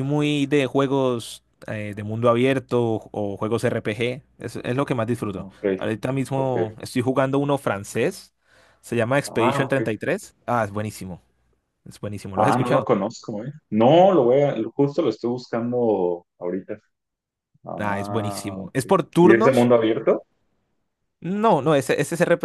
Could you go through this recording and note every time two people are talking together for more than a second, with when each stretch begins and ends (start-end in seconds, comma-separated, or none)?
17.8-19.7